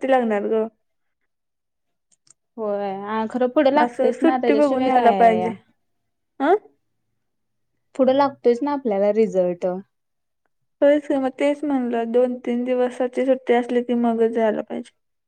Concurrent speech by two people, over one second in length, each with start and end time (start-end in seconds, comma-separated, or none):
3.8-5.4